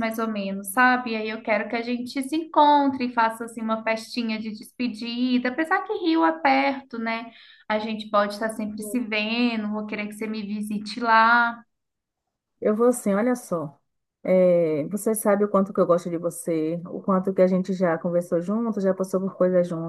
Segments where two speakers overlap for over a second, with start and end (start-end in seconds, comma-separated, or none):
none